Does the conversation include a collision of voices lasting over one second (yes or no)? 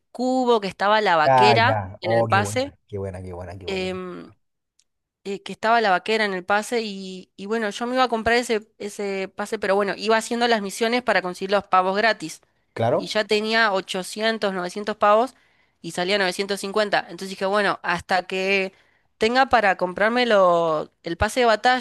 yes